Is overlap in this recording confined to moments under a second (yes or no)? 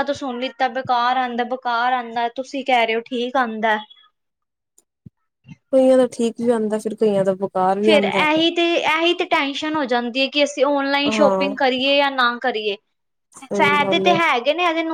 yes